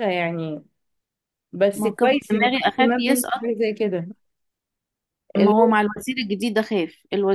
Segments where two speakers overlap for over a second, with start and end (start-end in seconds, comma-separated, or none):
1.8-3.4